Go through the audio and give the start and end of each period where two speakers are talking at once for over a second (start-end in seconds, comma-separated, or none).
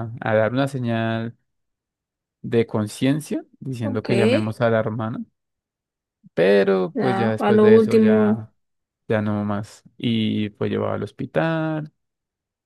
6.9-8.5